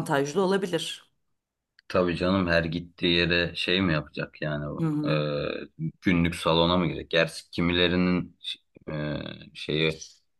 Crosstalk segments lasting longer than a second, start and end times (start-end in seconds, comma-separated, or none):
none